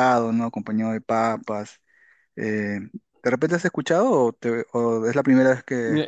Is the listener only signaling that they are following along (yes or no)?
no